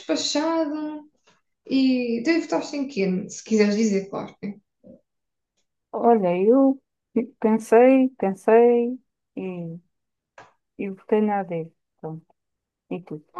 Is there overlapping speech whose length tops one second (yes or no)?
no